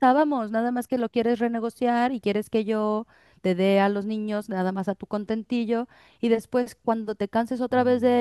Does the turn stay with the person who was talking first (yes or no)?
yes